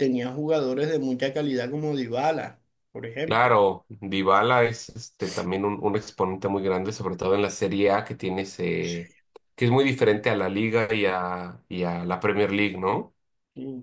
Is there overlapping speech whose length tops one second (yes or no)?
no